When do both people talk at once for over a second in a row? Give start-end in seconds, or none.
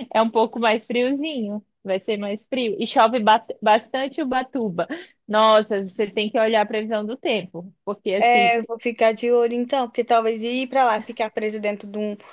none